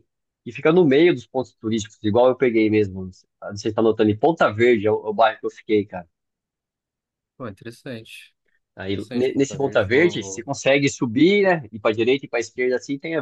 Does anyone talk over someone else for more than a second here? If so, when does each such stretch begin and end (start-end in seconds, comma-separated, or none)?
8.9-10.5